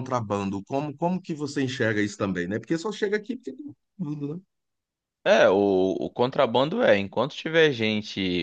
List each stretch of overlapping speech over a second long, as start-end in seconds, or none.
none